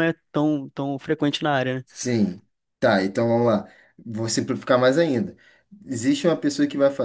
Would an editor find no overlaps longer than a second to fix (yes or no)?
yes